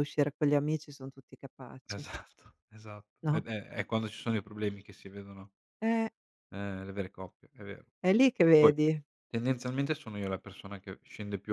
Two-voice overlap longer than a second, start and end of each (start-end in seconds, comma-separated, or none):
none